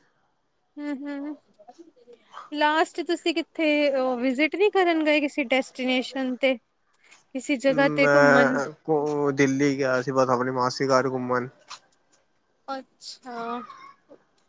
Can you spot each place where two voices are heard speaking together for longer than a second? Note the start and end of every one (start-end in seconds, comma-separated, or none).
none